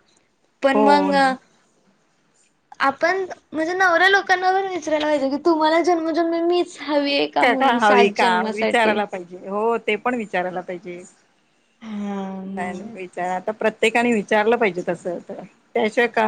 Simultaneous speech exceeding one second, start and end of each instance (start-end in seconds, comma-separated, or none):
7.4-8.9